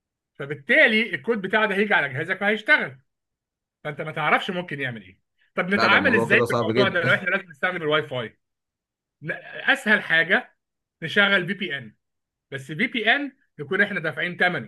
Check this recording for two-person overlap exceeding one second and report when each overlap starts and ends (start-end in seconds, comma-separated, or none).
5.7-7.3